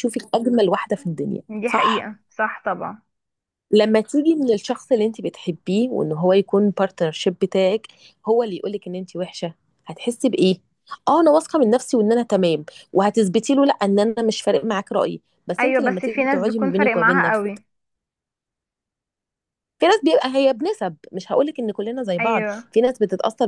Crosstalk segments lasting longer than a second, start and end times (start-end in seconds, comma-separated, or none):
15.6-17.6